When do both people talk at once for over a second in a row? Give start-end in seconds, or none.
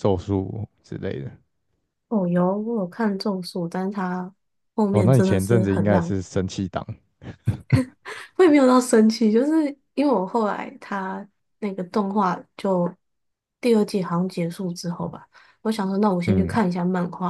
4.9-6.2